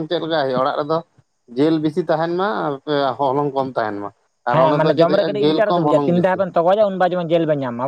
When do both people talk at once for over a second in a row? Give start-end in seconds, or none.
4.5-6.4